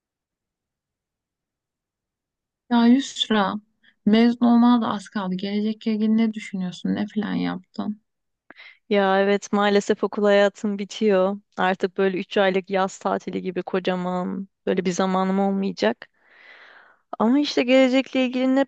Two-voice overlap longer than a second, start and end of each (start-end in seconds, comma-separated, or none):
none